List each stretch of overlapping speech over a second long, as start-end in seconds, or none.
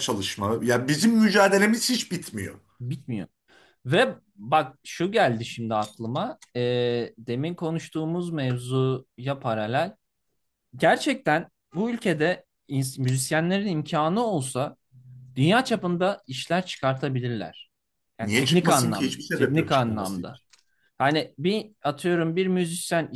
18.2-20.4